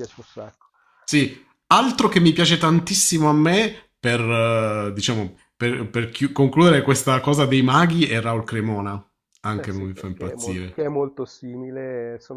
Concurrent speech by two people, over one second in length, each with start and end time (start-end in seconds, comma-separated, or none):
9.5-10.8